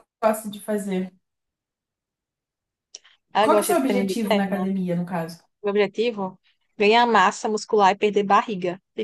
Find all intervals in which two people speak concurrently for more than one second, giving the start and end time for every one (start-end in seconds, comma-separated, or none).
3.4-4.7